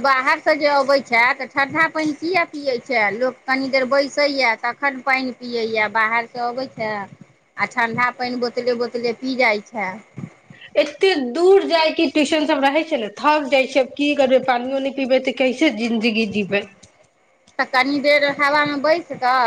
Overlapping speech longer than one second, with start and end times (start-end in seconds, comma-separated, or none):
none